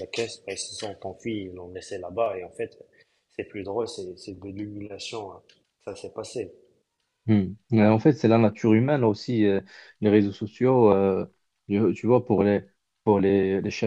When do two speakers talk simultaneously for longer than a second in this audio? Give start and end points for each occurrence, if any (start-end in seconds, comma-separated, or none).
none